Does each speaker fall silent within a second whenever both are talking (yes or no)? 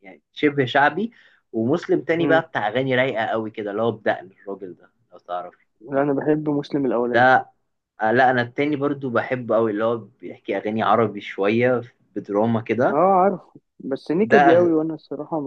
yes